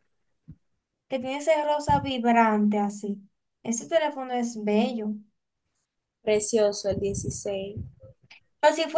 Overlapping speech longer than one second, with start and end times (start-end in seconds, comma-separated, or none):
none